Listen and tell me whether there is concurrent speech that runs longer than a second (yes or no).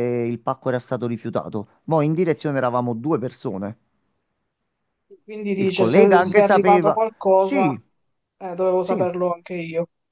yes